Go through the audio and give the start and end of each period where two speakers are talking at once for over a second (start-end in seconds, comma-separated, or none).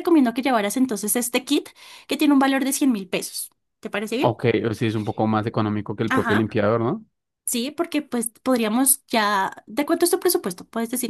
none